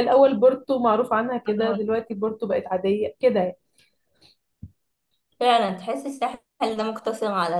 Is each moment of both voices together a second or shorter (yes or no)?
yes